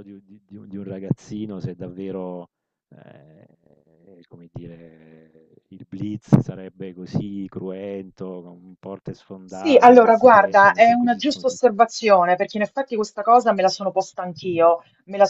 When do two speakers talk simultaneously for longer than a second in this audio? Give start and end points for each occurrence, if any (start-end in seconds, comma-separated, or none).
9.4-11.6